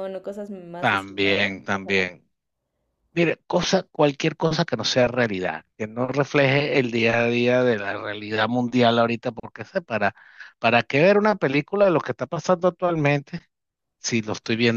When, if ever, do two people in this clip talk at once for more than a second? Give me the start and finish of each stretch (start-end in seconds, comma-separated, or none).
0.8-2.1